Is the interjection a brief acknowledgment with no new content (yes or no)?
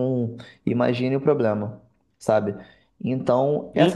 no